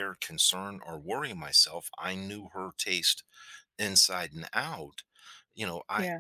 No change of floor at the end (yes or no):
yes